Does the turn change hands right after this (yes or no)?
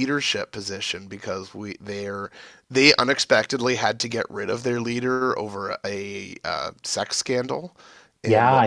yes